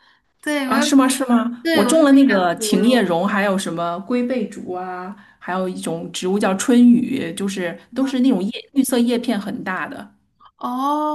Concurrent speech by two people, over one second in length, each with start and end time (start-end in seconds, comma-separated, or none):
1.6-3.2